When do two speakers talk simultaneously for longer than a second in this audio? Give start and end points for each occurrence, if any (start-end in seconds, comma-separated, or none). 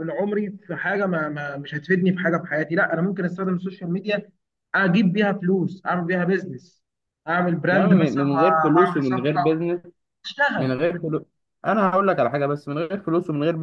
7.7-9.7